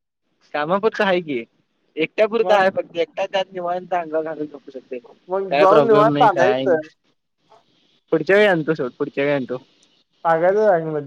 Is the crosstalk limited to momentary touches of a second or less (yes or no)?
no